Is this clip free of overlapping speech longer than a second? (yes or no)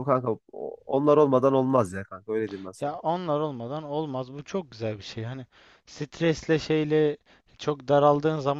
yes